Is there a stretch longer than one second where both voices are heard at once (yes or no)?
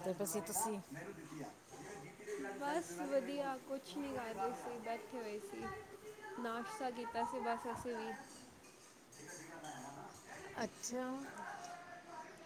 yes